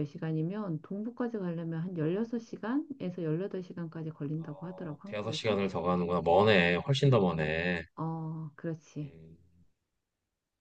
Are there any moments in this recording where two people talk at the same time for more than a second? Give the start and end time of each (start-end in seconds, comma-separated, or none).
4.4-5.6